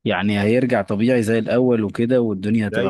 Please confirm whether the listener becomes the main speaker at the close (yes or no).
yes